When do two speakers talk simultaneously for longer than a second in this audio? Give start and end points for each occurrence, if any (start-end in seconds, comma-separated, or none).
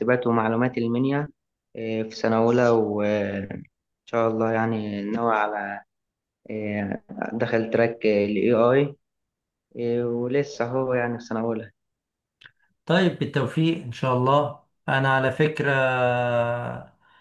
none